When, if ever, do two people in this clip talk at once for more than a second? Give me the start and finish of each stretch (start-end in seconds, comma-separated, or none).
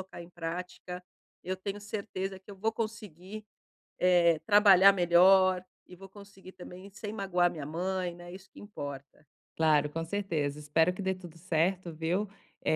none